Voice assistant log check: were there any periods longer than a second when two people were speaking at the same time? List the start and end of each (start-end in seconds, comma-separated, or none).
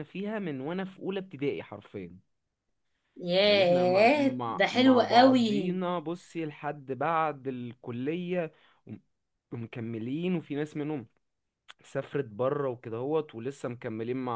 3.4-5.8